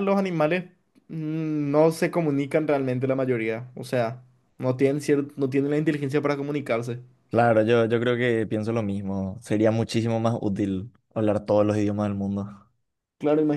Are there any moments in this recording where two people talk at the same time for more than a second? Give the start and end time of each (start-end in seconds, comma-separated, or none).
none